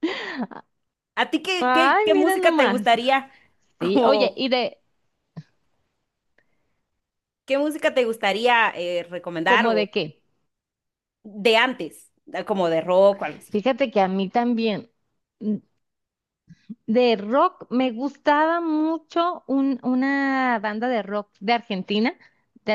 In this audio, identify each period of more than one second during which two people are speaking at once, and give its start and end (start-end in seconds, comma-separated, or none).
1.6-2.9